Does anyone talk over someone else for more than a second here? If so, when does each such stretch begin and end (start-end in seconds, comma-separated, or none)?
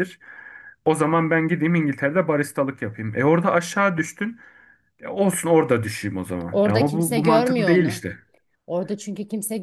6.5-8.0